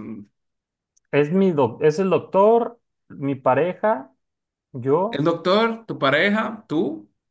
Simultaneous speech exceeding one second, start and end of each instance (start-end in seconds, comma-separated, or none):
none